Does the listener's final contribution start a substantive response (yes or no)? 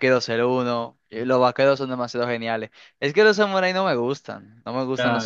yes